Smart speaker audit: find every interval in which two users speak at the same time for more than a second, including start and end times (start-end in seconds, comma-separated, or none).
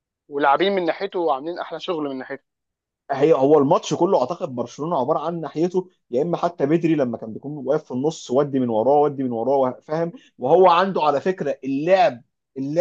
none